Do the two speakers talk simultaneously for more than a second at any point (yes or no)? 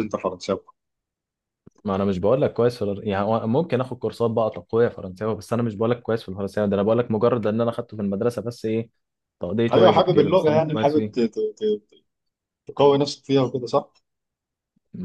yes